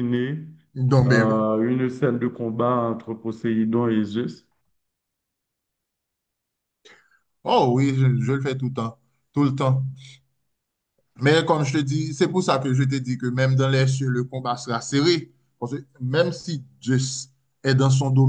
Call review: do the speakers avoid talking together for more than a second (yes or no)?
yes